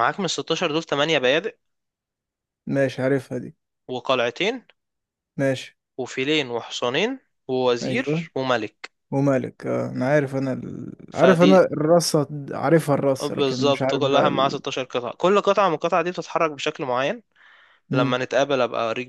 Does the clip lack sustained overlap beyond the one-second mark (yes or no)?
no